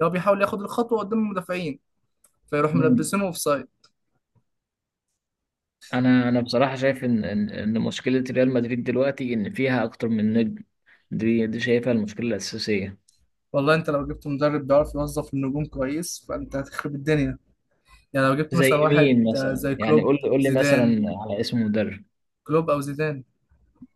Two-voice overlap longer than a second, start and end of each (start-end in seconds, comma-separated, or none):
18.5-21.0